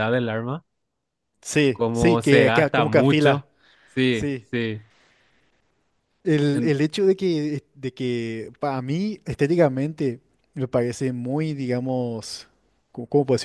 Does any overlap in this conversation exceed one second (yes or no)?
yes